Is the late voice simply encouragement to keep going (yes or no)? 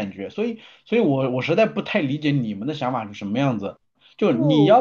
yes